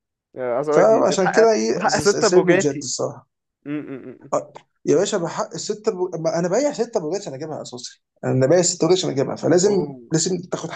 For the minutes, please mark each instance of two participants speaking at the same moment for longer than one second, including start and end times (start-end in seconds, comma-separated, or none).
0.7-2.9